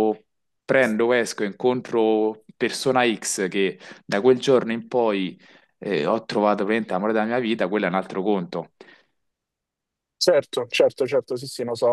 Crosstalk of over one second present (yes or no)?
no